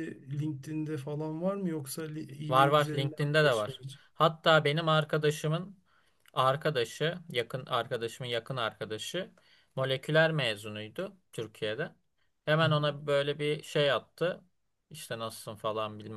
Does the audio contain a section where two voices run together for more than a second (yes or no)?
yes